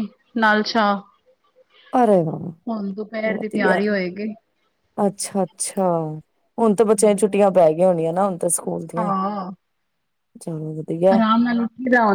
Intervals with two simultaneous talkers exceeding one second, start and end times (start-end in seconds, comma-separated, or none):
none